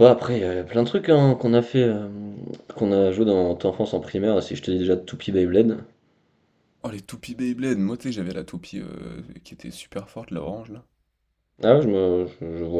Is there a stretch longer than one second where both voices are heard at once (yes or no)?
no